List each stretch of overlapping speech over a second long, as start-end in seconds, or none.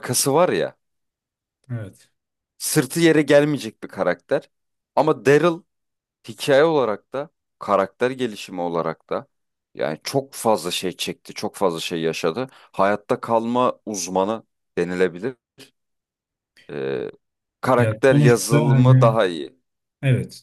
17.8-19.2